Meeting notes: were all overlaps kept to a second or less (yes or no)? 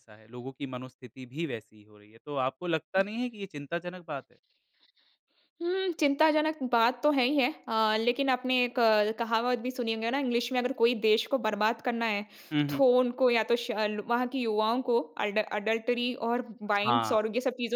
yes